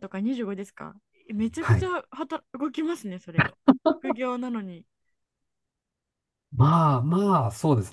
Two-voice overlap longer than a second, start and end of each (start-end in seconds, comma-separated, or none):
none